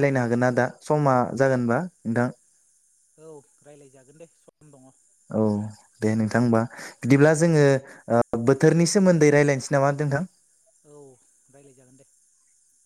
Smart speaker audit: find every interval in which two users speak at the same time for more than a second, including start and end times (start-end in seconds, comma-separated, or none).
none